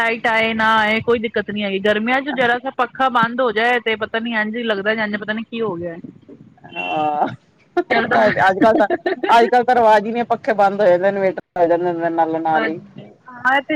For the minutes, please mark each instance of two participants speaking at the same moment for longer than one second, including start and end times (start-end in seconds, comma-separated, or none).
none